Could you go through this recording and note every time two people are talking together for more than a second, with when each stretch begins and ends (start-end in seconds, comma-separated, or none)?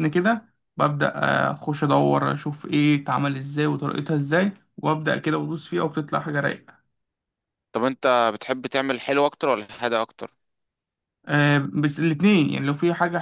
none